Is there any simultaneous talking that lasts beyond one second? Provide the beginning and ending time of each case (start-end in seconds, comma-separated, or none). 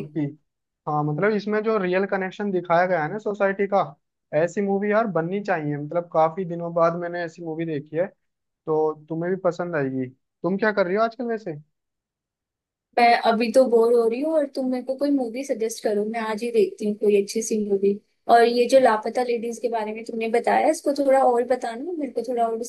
none